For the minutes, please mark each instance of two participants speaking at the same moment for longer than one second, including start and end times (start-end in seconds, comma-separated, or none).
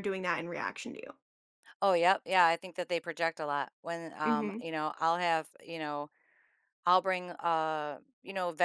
none